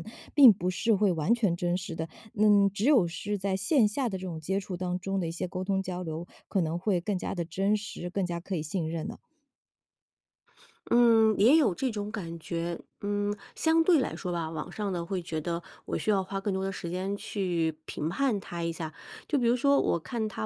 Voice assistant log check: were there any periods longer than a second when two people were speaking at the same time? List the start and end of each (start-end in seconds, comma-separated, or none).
none